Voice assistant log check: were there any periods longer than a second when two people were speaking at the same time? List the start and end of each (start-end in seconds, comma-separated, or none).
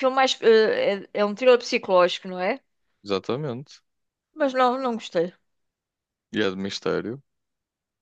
none